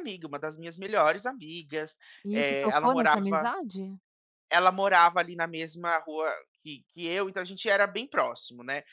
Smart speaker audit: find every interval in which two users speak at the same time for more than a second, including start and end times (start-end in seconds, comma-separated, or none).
2.2-3.5